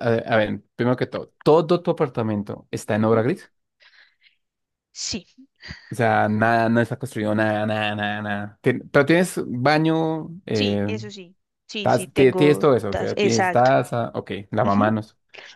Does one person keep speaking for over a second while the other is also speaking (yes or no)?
yes